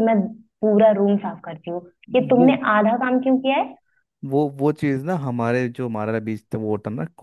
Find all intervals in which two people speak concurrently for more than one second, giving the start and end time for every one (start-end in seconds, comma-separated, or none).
none